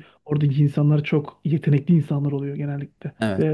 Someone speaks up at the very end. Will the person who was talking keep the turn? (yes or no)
no